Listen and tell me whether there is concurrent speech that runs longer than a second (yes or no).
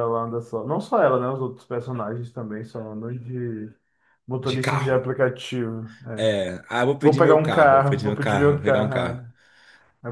yes